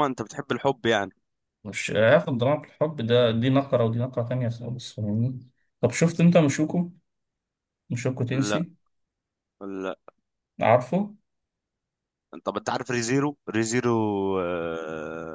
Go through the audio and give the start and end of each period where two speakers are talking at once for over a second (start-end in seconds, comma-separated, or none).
none